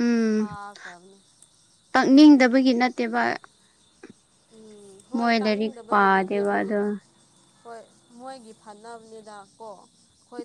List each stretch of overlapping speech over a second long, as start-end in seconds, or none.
5.2-6.7